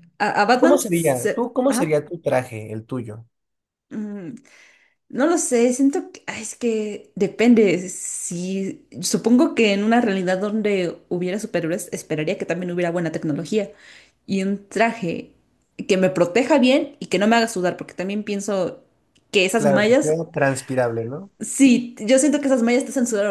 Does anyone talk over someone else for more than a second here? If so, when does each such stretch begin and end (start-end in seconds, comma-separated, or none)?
0.6-2.0